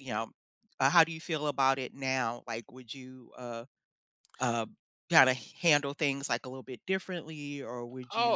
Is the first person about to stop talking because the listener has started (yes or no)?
yes